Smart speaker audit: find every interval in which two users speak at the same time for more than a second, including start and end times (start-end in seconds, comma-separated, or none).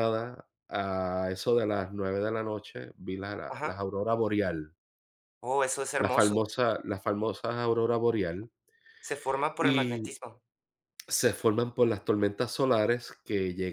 none